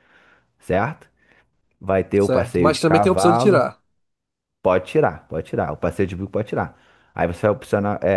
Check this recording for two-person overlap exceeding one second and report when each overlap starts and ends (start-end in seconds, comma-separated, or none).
2.1-3.6